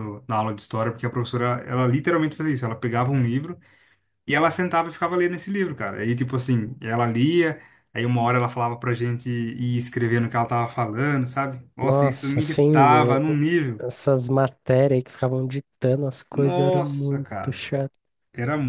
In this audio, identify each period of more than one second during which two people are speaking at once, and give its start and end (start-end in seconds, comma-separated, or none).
11.8-13.2, 16.3-17.6